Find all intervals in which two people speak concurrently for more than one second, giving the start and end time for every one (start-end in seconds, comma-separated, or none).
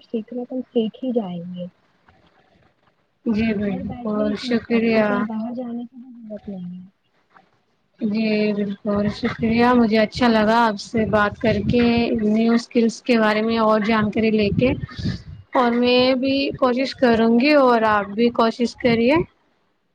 3.5-5.0